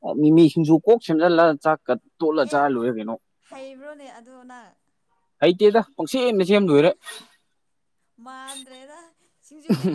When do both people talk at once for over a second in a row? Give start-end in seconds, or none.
none